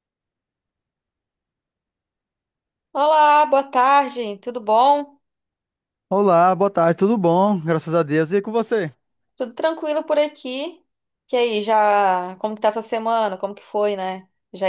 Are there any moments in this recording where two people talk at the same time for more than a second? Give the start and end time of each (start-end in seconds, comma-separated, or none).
none